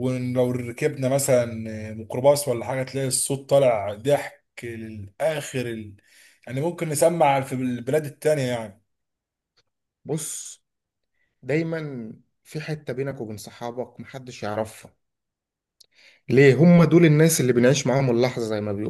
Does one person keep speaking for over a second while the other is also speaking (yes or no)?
no